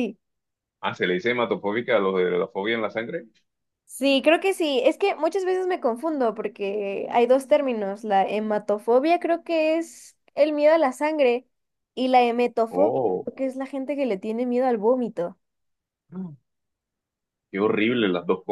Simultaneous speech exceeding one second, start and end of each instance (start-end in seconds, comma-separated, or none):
none